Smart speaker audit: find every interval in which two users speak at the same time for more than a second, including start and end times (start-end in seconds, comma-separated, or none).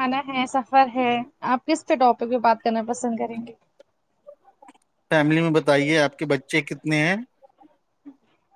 none